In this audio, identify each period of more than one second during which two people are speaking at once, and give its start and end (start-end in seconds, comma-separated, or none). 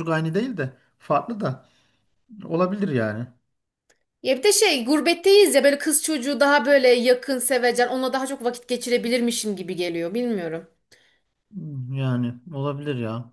none